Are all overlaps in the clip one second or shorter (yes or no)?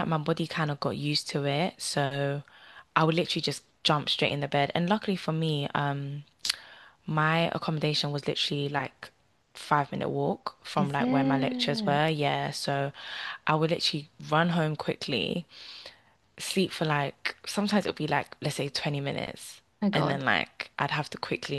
no